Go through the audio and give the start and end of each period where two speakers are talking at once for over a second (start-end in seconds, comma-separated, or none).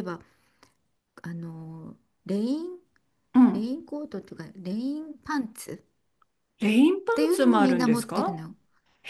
7.1-8.4